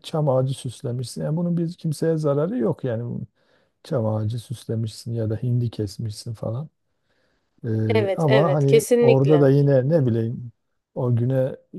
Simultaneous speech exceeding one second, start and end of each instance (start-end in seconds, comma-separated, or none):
7.9-9.5